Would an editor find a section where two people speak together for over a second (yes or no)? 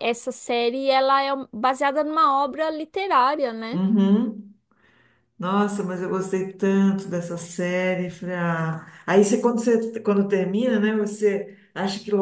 no